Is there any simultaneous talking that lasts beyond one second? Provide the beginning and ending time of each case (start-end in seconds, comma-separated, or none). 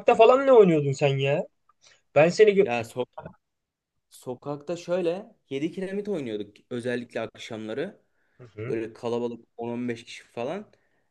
none